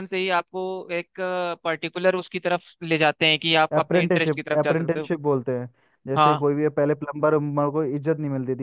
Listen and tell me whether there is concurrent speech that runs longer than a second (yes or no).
yes